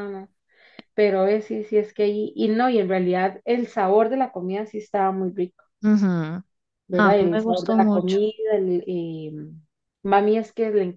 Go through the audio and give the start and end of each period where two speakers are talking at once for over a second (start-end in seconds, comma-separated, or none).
7.0-8.2